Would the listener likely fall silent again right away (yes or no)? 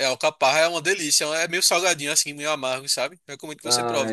no